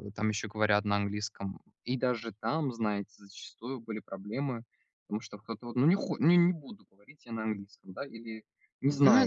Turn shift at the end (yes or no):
yes